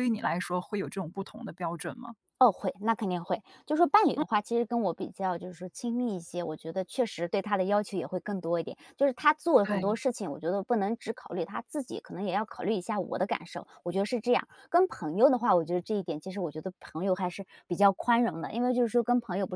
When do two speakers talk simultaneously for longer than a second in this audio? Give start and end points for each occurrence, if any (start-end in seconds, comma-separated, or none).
none